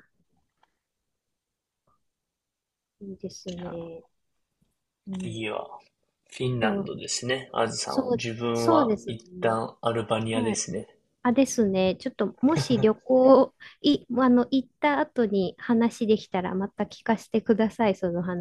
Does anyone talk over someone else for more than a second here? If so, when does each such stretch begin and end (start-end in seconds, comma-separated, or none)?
7.9-9.6